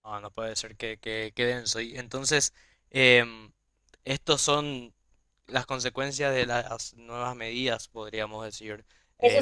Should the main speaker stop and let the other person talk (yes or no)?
yes